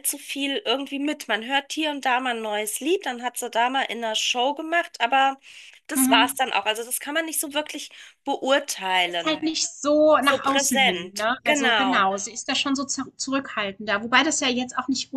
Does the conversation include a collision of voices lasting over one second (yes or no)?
yes